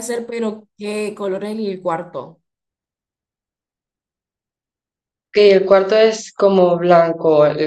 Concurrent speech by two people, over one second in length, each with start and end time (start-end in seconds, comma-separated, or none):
none